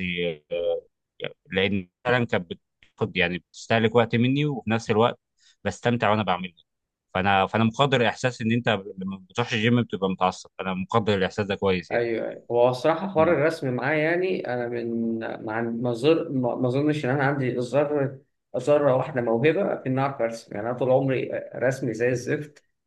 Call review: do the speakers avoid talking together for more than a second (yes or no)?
yes